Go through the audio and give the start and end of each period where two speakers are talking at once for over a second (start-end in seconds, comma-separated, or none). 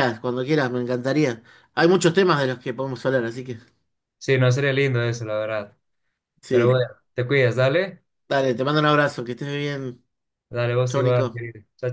none